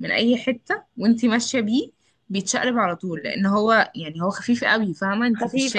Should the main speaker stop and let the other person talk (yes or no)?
yes